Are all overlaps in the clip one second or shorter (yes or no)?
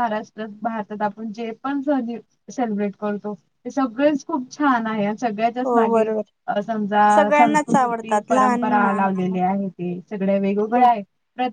no